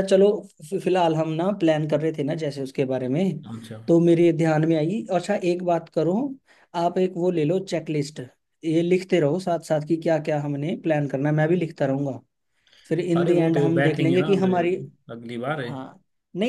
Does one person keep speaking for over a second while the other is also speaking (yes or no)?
yes